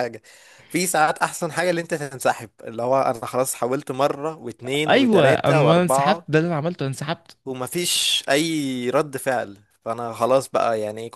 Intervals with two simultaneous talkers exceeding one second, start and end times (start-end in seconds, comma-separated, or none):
4.9-6.3